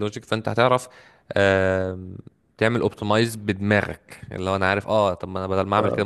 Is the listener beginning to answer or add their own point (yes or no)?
yes